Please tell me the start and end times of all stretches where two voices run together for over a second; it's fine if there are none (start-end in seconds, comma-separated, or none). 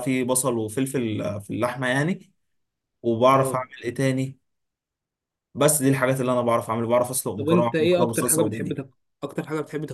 7.4-8.9